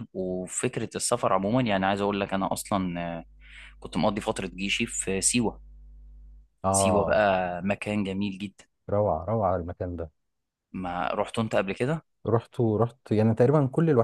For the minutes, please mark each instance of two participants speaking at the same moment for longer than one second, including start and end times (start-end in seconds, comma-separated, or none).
none